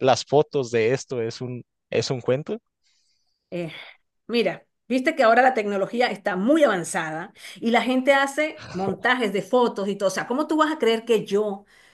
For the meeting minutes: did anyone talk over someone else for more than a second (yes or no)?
no